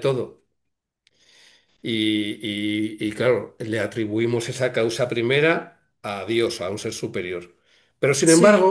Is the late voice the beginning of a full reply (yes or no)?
no